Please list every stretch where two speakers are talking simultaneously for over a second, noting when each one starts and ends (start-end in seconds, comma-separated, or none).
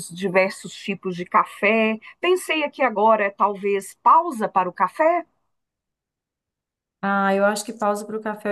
none